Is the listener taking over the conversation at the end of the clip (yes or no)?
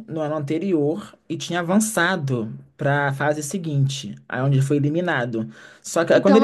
yes